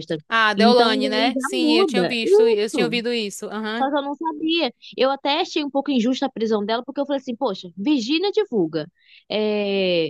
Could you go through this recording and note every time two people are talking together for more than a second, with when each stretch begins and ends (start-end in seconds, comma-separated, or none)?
0.6-3.0